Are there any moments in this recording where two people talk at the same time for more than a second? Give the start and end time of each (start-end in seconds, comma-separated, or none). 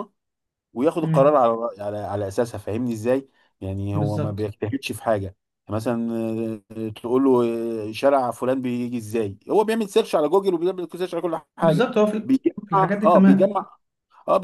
11.6-13.6